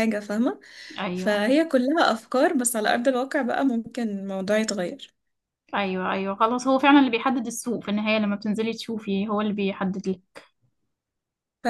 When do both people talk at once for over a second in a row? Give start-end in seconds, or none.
none